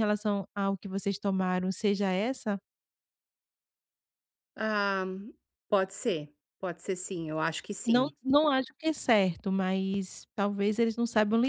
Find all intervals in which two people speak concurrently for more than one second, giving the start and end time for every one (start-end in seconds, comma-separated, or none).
none